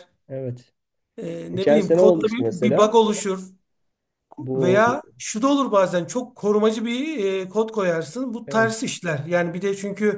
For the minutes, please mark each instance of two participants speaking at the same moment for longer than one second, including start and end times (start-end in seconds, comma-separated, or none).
1.5-3.0